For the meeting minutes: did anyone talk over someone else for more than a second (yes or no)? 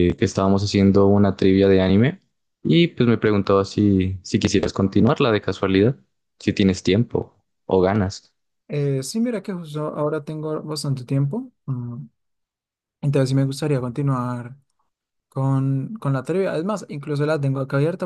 no